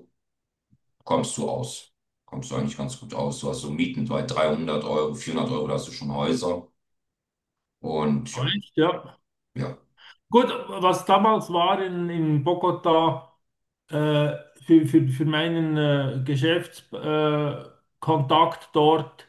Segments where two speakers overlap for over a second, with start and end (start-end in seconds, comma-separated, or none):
none